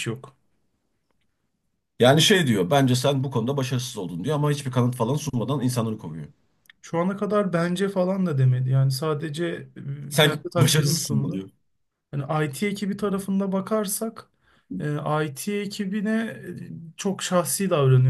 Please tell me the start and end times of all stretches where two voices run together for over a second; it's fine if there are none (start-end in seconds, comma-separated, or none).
10.1-11.4